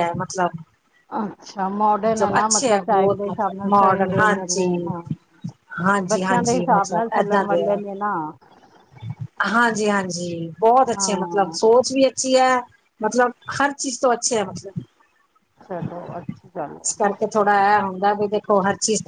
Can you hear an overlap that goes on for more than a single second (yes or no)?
yes